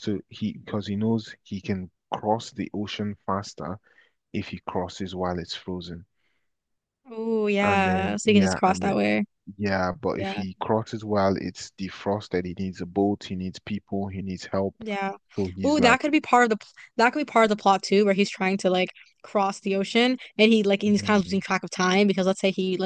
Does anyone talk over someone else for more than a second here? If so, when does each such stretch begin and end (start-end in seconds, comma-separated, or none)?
7.6-9.0